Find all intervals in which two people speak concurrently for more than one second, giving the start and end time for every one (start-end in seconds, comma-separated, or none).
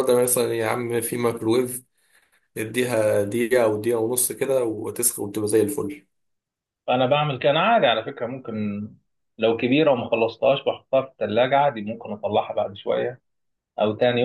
none